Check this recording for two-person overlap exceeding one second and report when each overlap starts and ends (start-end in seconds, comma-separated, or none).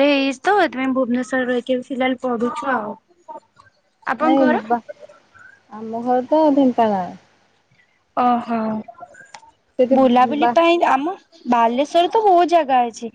none